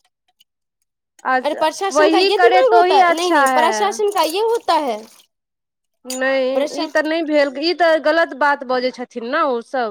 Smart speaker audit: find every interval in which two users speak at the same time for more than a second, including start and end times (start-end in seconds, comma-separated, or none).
1.4-4.0